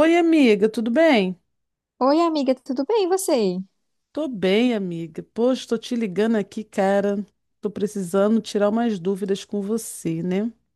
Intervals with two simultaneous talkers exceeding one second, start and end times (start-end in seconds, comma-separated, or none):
none